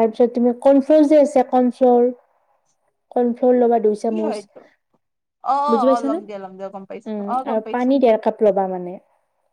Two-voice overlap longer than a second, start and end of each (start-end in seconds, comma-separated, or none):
5.9-7.9